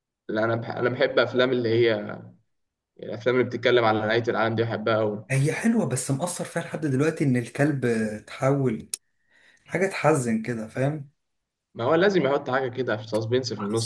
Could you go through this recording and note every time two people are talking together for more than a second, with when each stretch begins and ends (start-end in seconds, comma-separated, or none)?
none